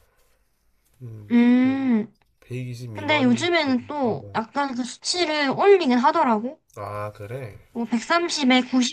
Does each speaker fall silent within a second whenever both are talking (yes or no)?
no